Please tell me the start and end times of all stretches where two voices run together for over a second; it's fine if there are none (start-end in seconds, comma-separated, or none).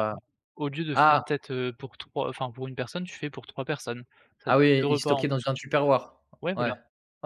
4.5-5.8